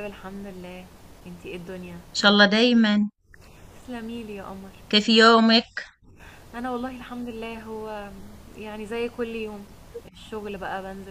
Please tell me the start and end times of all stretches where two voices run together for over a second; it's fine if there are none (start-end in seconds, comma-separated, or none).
none